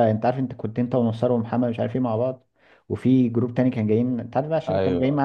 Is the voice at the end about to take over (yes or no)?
no